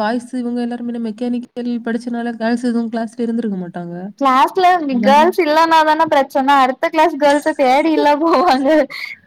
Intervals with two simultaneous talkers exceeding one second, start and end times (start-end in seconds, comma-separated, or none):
none